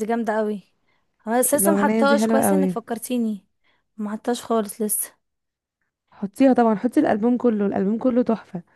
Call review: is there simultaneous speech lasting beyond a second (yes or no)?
yes